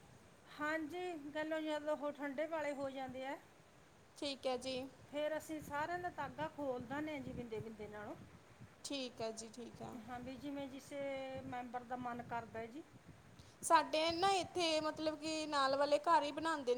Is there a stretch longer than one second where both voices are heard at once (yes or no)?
no